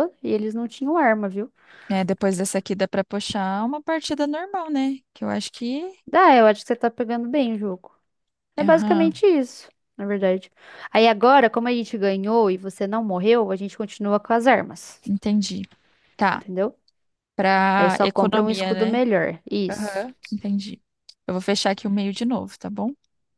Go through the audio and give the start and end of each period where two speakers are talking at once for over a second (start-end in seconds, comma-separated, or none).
17.8-19.0